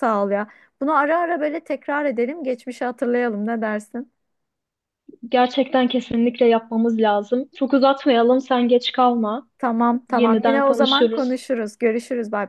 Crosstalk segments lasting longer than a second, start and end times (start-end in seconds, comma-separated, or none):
10.1-11.4